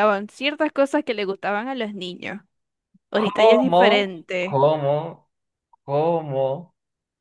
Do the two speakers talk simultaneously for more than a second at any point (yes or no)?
yes